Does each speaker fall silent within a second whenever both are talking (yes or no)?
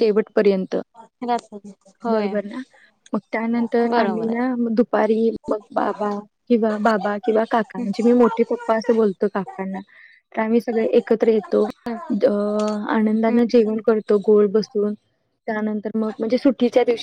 yes